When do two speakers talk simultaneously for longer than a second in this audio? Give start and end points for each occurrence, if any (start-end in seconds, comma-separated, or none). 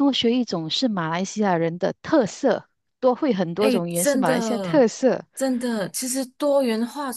3.6-4.8